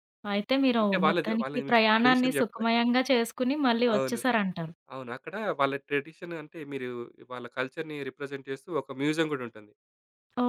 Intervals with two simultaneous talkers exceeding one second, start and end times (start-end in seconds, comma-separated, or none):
0.8-2.7